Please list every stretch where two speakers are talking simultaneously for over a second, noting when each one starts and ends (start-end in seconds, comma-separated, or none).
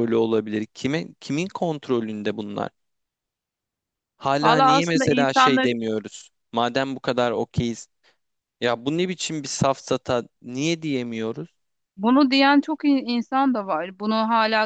4.4-5.8